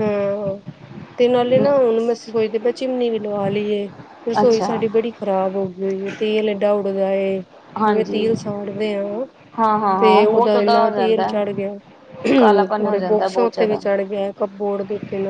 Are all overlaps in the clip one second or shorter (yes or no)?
no